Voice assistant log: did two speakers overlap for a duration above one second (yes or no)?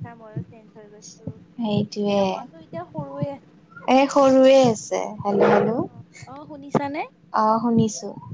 no